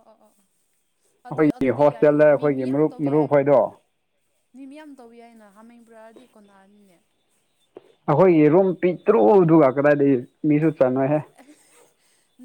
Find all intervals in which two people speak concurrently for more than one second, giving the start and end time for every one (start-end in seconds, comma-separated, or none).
1.4-3.3